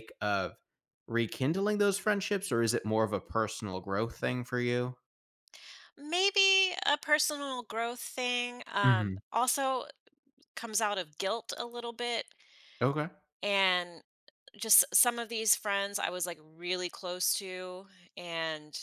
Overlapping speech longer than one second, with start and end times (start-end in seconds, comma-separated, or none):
none